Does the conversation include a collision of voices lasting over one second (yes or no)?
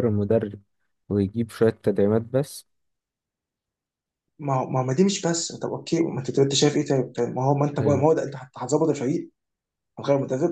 no